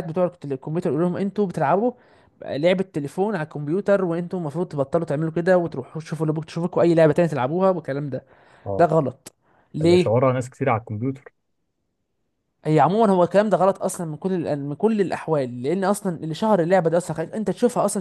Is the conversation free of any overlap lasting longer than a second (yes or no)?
yes